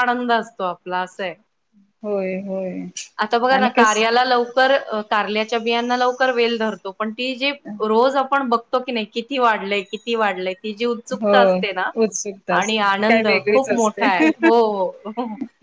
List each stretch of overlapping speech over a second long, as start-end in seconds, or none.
12.6-14.1